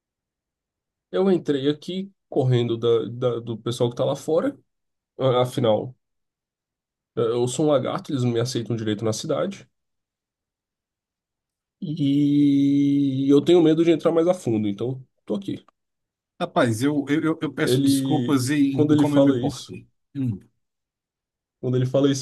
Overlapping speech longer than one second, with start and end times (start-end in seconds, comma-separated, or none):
17.6-19.7